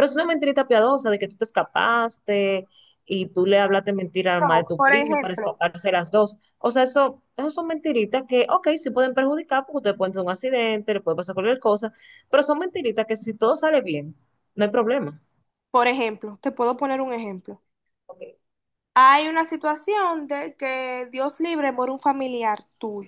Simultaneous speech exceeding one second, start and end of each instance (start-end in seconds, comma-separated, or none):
4.4-5.6